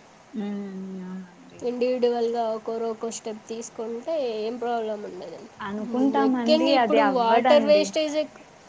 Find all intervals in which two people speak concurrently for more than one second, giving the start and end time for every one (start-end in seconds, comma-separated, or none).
6.2-7.8